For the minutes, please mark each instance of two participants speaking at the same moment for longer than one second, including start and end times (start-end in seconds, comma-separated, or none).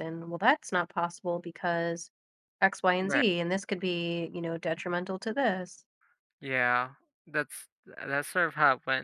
none